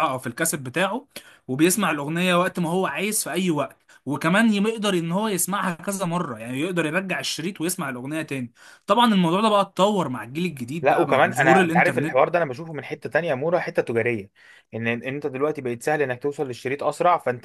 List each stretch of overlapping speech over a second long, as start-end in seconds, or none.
10.8-12.3